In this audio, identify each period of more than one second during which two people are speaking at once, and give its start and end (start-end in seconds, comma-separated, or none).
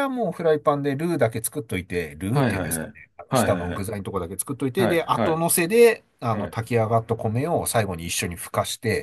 2.3-3.9